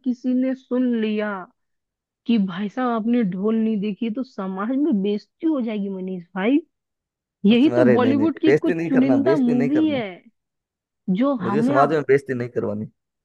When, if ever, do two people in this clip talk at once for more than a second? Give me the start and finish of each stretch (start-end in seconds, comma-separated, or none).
7.5-10.0